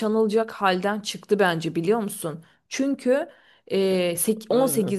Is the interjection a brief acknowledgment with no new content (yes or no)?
yes